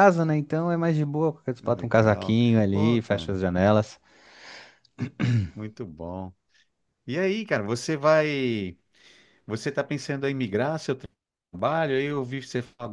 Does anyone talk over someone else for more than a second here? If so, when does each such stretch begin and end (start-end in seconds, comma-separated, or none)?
1.6-3.4